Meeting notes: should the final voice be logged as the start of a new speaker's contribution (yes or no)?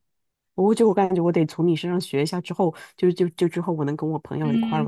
yes